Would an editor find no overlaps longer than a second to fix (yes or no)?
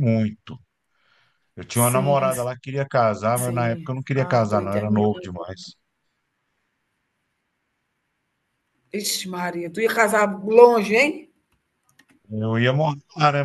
no